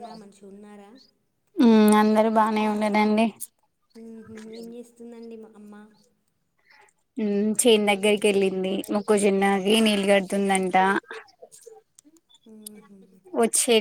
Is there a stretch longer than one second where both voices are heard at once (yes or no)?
no